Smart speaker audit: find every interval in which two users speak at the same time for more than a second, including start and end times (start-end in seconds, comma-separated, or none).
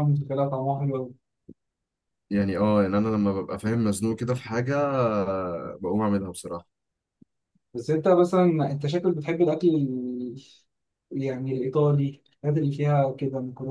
none